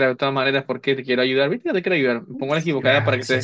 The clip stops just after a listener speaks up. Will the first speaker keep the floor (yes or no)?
no